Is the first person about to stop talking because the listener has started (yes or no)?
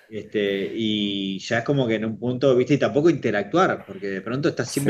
no